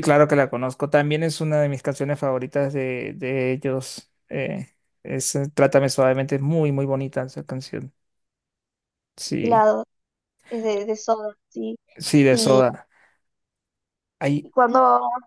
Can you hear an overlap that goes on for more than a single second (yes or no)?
no